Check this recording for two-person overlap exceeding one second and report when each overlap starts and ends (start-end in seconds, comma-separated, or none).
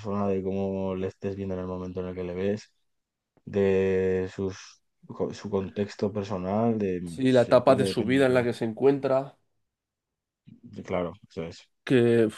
7.0-8.5